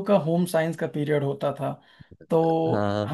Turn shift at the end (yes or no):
no